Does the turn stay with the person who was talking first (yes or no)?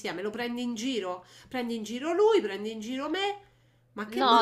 no